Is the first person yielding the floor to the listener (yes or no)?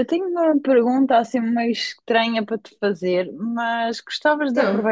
no